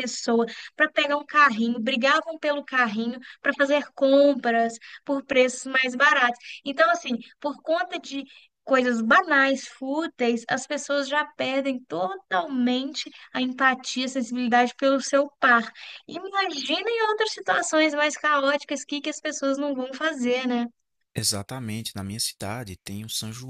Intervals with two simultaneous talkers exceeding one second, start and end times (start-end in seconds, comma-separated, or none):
none